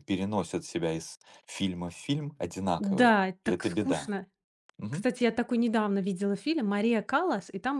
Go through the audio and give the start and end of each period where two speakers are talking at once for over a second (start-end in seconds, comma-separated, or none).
2.8-4.1